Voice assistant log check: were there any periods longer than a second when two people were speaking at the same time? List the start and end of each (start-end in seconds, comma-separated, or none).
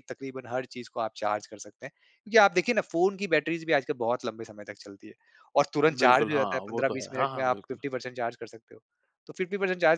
5.9-7.8